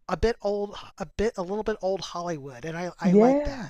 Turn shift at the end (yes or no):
yes